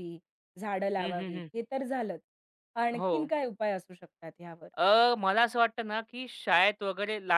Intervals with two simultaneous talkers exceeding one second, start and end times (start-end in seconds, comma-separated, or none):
none